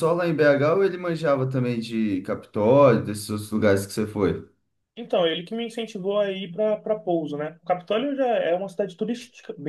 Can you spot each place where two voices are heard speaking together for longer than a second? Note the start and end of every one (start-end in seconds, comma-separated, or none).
none